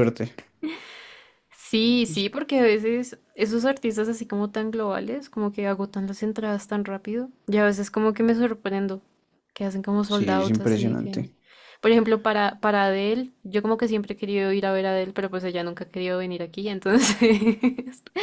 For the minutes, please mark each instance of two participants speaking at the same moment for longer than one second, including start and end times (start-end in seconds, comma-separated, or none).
10.1-11.3